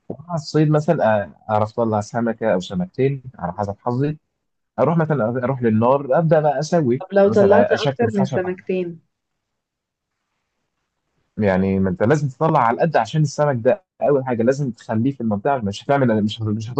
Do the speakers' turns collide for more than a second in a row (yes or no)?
yes